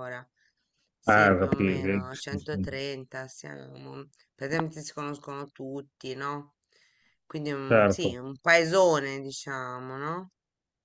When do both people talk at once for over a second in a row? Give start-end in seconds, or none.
1.1-2.8